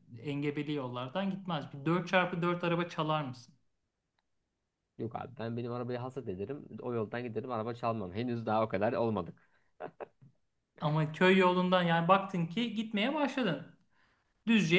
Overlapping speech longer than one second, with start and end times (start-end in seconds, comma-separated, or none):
none